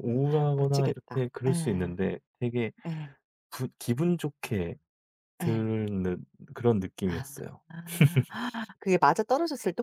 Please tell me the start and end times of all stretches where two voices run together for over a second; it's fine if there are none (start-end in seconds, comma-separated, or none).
0.6-2.0